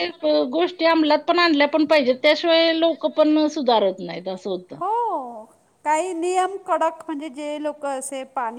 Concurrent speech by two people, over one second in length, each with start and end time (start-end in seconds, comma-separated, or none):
none